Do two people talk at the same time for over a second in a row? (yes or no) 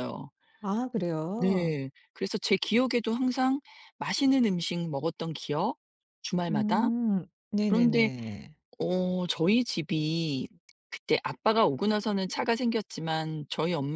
no